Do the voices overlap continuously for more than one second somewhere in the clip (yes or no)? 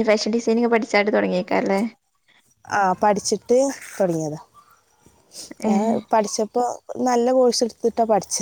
no